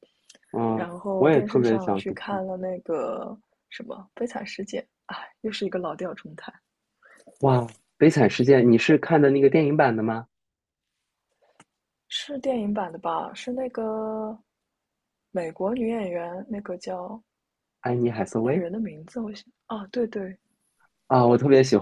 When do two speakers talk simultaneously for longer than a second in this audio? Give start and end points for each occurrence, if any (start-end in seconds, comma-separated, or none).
0.7-2.4